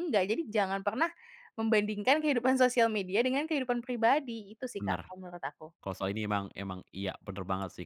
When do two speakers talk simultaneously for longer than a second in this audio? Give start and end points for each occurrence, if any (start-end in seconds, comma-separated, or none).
none